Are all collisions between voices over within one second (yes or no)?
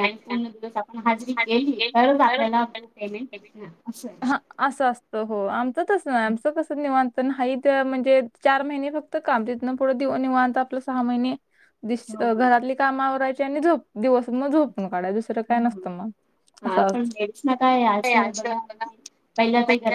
yes